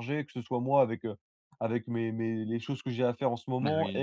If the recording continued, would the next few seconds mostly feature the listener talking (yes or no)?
no